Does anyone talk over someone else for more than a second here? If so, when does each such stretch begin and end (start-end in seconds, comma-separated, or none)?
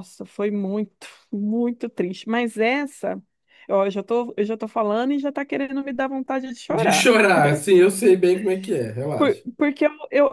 none